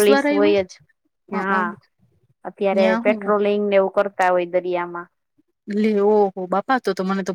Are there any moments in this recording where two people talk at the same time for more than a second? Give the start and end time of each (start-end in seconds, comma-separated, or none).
none